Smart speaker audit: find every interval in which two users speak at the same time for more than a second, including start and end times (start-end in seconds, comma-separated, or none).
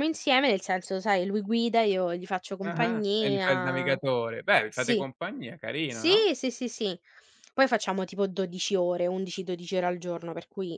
2.6-4.0